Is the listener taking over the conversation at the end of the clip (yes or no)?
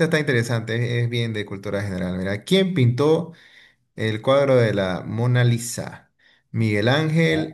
no